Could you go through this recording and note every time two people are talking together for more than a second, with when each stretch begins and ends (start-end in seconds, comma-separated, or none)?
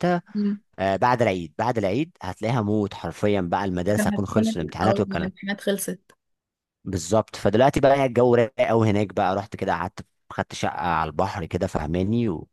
3.9-5.3